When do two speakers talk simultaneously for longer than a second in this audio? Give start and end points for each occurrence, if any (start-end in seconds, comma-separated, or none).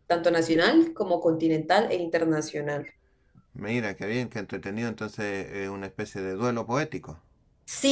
none